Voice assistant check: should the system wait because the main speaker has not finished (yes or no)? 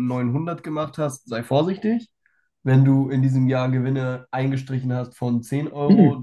no